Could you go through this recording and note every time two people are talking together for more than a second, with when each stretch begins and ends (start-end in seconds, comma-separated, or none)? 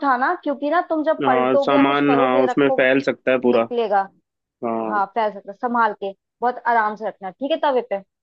1.2-2.9